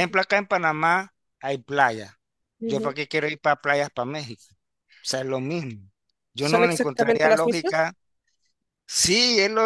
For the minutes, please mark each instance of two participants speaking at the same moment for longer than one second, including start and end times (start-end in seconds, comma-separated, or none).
6.4-7.8